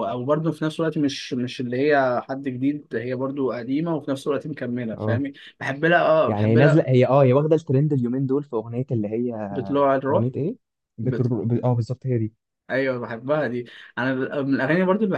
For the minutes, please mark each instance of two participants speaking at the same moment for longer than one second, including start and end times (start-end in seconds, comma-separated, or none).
none